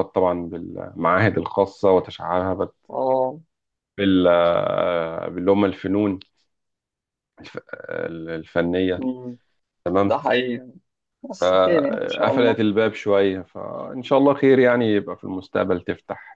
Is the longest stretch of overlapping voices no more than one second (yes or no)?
no